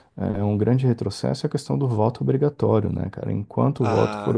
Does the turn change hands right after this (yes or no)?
no